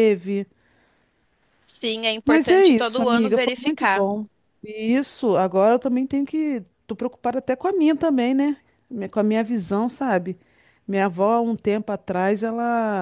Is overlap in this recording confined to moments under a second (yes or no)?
no